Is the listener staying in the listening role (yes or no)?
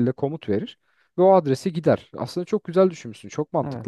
no